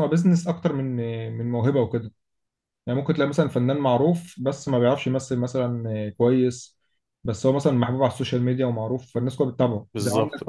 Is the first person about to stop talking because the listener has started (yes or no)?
no